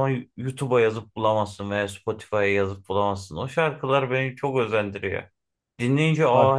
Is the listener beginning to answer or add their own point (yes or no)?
no